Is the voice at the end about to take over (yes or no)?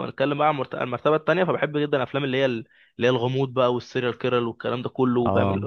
no